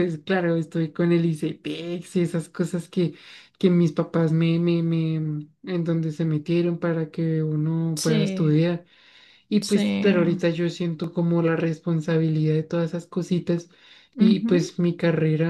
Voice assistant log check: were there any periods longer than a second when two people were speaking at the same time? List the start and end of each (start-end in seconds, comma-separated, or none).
none